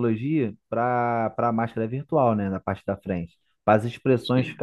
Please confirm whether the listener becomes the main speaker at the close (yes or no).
no